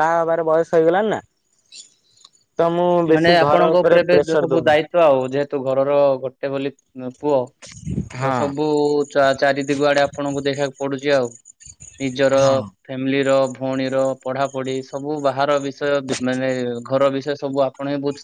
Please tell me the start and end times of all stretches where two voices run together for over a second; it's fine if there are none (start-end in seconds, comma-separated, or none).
3.1-4.8